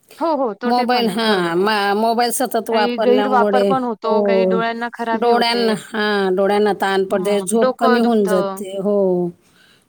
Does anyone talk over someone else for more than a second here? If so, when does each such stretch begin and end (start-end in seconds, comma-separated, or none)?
2.7-4.2, 7.1-8.6